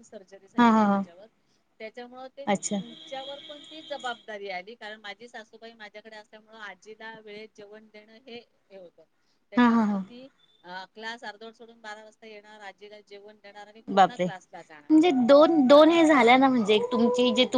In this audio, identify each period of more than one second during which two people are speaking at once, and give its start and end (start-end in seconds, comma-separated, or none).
none